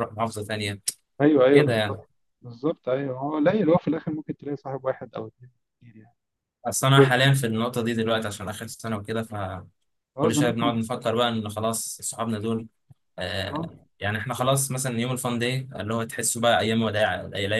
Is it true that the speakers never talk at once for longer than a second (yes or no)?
yes